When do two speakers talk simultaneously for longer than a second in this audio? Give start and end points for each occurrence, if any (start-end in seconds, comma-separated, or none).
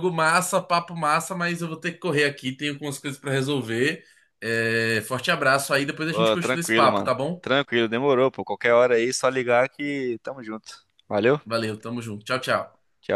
6.1-7.5